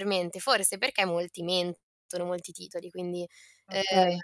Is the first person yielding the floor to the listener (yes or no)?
no